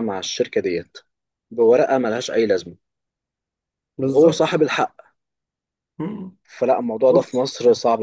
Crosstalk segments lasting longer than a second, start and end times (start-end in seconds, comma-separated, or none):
none